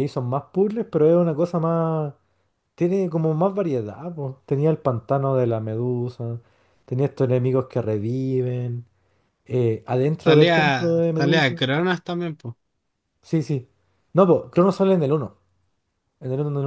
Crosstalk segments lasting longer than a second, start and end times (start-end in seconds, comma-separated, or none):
10.2-11.7